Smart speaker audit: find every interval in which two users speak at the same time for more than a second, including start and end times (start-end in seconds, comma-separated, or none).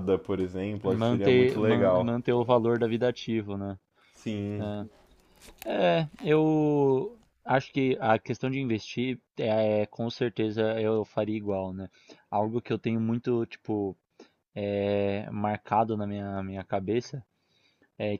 0.9-2.2